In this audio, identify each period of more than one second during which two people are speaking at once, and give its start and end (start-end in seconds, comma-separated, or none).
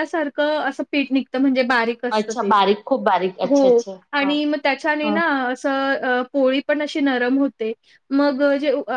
none